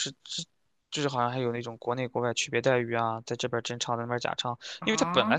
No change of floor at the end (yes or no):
yes